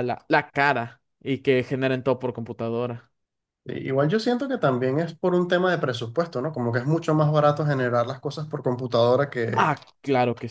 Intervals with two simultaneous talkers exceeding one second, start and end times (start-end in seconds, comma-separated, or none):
none